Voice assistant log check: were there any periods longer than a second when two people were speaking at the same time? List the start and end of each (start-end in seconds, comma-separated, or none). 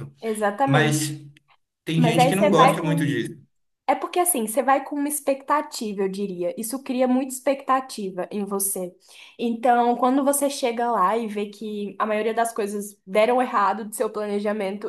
1.9-3.2